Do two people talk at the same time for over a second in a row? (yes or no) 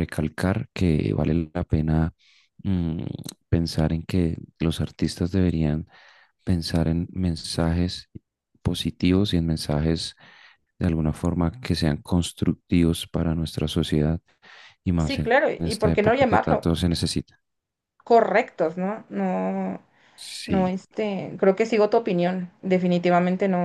yes